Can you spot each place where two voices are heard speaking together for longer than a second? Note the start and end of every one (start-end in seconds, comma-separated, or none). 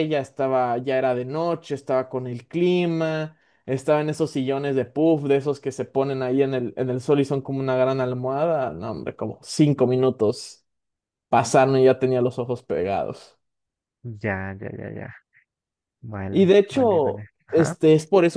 16.3-17.8